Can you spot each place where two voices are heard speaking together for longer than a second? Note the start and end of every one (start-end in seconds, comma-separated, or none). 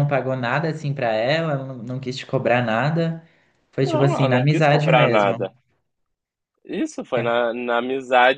3.8-5.4